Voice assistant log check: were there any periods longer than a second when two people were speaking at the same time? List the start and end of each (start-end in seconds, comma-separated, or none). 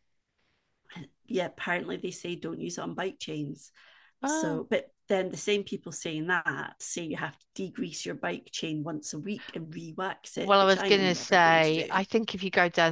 10.3-12.0